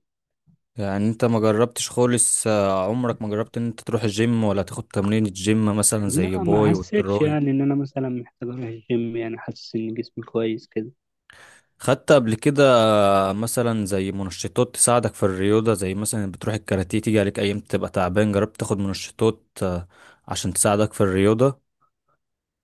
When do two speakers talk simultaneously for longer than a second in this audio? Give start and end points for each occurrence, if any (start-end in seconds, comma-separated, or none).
6.0-7.4